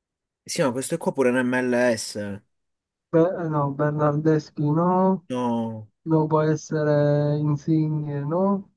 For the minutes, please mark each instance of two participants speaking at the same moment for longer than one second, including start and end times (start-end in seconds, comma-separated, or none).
none